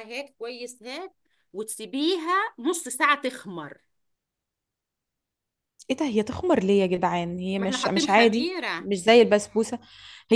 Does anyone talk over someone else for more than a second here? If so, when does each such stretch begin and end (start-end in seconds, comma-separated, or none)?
7.6-8.9